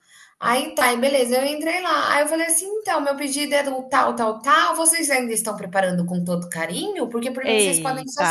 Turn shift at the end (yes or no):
no